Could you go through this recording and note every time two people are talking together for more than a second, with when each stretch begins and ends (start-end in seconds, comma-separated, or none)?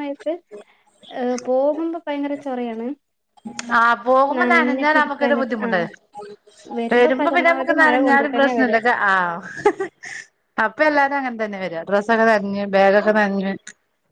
4.4-5.8, 7.2-8.8